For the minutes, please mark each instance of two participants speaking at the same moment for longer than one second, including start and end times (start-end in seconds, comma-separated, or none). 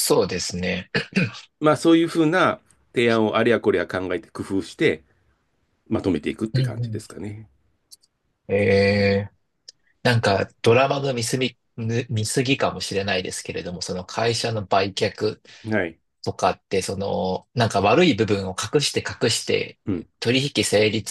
none